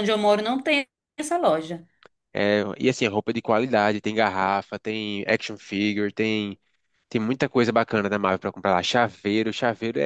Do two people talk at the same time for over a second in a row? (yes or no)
no